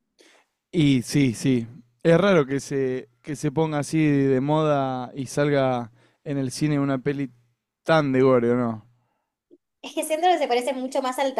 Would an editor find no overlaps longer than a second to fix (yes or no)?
yes